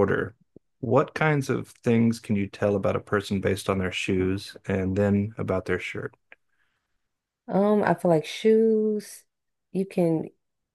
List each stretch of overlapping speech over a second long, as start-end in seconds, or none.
none